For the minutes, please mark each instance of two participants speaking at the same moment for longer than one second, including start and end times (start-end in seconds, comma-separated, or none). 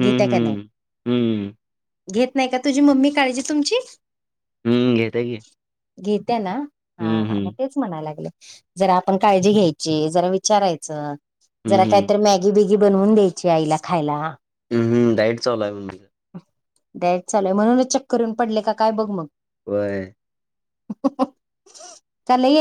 none